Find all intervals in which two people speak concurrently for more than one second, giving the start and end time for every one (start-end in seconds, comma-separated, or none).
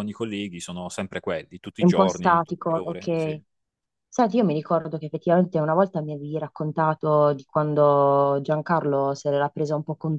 1.8-3.4